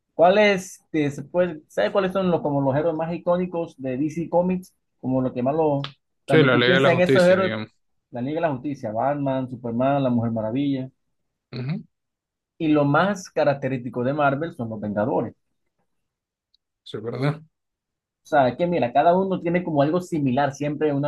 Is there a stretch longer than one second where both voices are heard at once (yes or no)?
yes